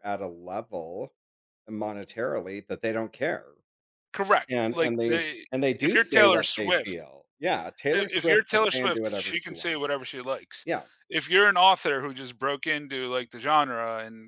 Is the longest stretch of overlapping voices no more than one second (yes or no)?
no